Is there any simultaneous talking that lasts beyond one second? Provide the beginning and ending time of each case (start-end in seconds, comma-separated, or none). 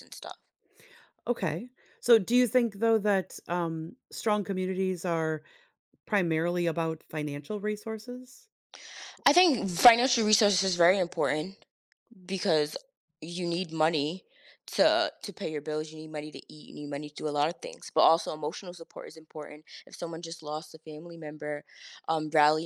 none